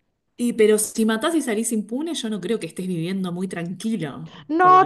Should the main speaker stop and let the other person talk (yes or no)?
yes